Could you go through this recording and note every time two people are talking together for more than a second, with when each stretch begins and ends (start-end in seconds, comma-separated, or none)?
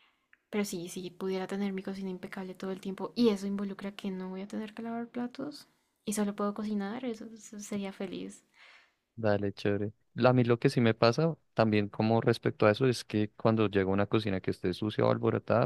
none